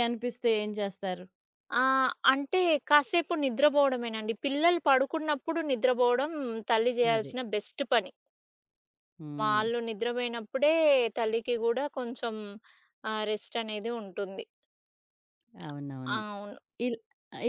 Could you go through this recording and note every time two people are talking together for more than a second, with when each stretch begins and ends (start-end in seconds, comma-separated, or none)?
none